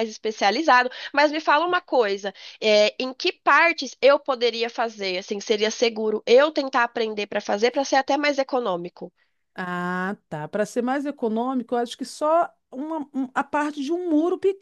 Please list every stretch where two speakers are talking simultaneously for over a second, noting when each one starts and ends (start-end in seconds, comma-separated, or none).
none